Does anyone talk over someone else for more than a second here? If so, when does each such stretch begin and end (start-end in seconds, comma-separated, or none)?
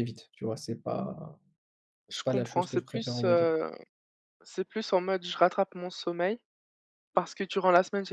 2.1-3.5